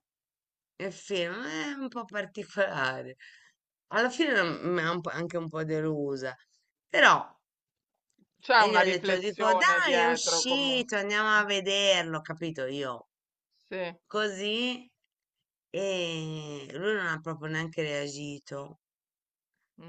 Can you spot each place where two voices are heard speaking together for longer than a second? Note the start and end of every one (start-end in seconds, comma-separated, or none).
8.6-10.9